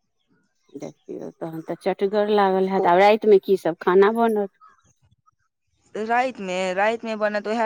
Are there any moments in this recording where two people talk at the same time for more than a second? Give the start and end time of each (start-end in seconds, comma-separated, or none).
none